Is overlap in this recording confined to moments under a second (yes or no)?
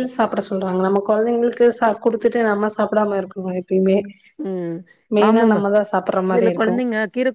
yes